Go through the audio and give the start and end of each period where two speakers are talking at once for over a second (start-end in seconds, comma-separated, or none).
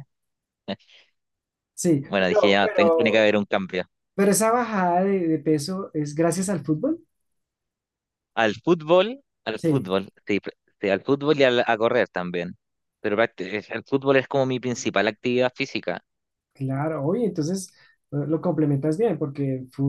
2.1-3.3